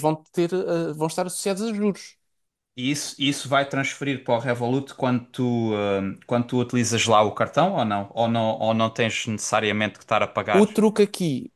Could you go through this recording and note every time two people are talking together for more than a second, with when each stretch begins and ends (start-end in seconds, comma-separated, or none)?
none